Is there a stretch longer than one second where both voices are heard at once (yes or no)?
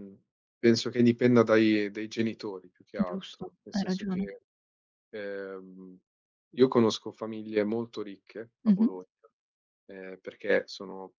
yes